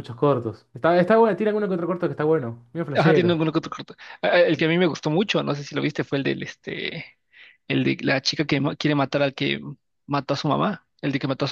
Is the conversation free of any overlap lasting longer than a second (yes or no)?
yes